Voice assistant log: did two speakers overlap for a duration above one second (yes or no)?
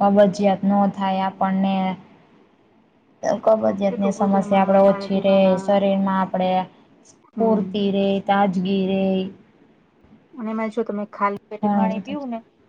yes